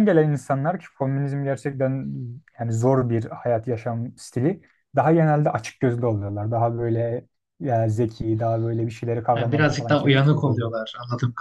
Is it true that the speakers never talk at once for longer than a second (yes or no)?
no